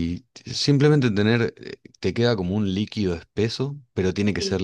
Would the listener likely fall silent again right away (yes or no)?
yes